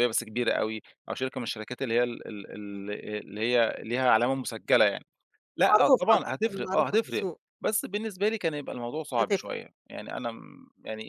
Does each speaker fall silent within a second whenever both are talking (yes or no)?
no